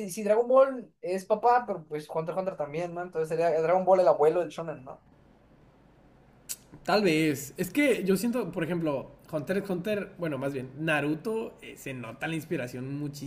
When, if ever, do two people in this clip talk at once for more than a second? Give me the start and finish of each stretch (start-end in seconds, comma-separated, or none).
none